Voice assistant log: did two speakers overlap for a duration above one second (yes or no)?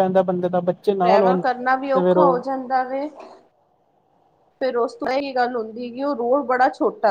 yes